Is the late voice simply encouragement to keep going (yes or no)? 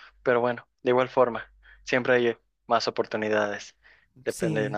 yes